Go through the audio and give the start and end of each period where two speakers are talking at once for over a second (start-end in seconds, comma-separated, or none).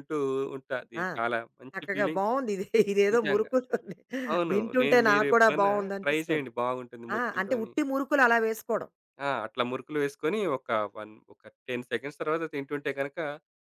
4.5-6.5